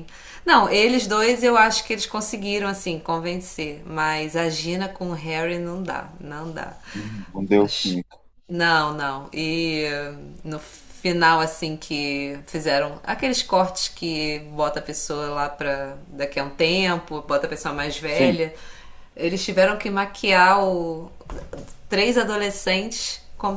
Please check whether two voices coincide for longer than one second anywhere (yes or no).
no